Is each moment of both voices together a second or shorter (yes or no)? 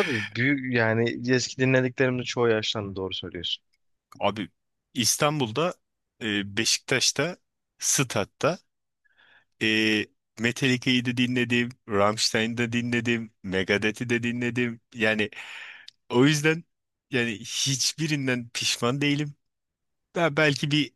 yes